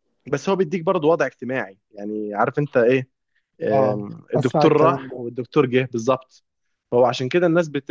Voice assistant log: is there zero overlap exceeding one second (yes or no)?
no